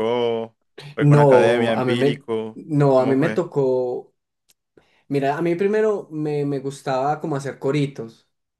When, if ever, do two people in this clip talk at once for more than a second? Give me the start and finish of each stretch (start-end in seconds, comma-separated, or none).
1.0-3.4